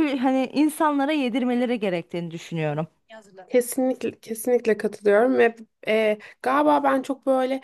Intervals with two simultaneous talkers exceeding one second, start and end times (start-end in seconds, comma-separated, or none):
none